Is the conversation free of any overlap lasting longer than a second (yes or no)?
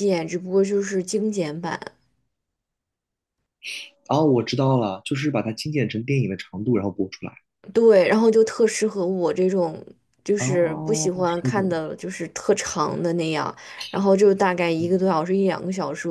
no